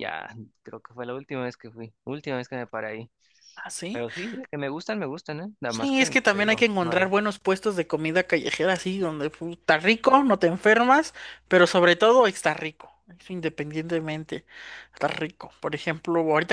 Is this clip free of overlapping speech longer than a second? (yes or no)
no